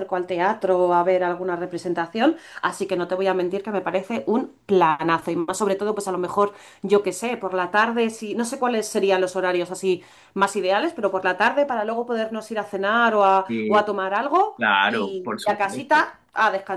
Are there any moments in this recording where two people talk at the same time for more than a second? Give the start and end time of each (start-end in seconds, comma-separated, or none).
14.6-16.1